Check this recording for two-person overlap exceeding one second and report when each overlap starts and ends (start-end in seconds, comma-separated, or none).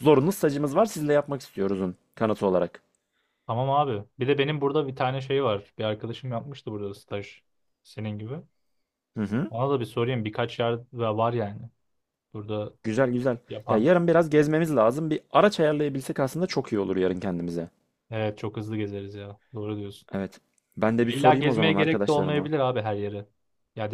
21.0-22.5